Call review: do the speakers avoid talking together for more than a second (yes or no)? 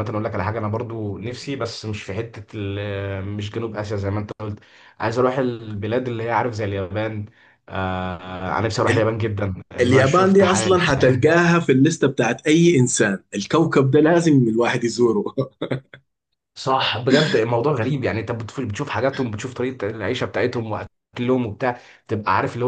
no